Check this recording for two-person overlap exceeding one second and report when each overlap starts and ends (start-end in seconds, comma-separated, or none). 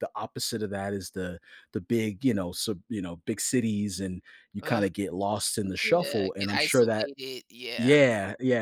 5.8-7.1